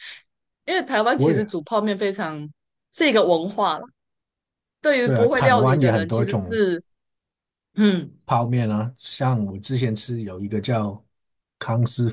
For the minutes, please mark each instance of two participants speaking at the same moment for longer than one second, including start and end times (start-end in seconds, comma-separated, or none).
5.0-6.6